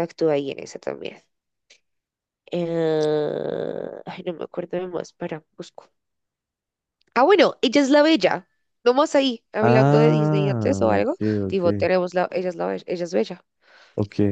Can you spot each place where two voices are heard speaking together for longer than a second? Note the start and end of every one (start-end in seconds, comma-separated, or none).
9.6-11.9